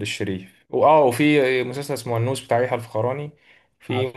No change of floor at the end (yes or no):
yes